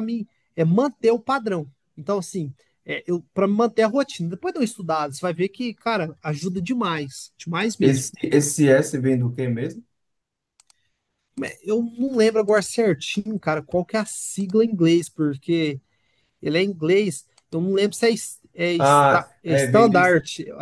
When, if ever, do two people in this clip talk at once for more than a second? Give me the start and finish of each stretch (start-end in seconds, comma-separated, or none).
18.8-20.0